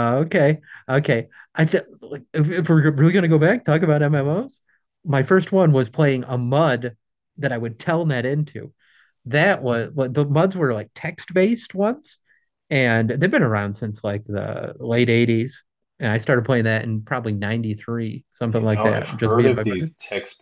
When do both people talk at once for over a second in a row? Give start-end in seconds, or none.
18.5-19.9